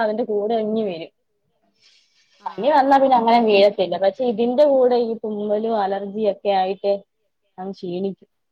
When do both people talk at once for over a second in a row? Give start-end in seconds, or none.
2.5-6.9